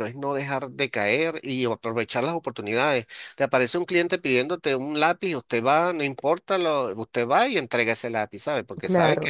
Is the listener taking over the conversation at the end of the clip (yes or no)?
yes